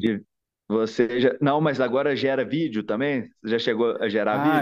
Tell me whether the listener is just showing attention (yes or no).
no